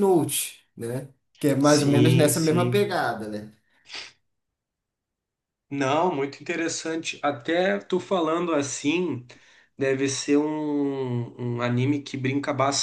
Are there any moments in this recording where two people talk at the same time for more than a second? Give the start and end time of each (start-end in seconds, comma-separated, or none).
1.6-2.9